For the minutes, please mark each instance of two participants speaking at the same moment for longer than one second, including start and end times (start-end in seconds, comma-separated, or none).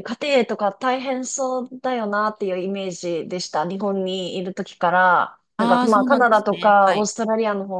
5.6-7.1